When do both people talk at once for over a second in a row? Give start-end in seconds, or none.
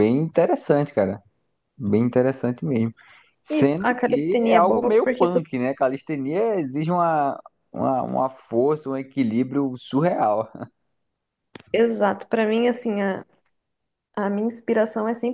3.5-5.4